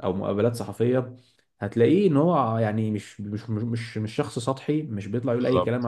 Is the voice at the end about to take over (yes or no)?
no